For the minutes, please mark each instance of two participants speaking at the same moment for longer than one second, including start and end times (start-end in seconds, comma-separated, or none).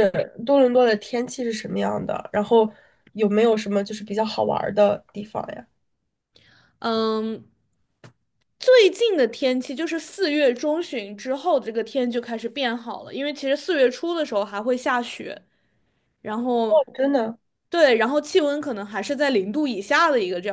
none